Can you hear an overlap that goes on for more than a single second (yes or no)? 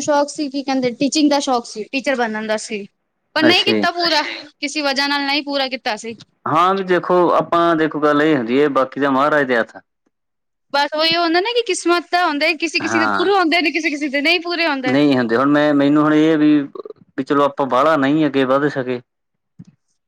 no